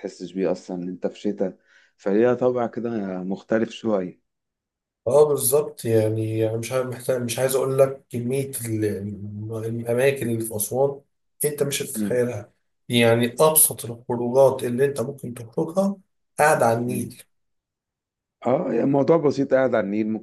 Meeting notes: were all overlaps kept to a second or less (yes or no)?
yes